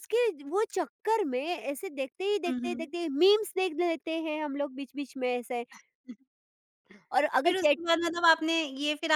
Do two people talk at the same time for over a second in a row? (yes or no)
no